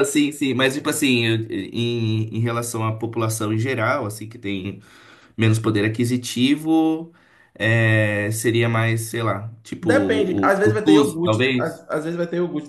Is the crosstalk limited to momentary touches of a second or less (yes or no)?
no